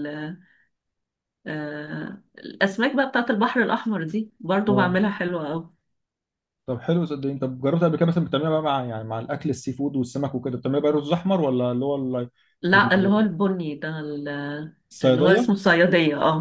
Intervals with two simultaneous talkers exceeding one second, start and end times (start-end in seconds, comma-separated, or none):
none